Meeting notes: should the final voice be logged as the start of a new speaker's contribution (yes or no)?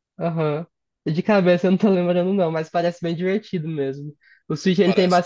no